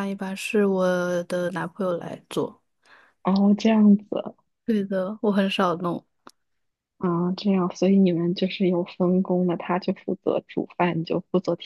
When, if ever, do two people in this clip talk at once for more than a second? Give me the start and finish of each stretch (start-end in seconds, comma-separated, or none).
none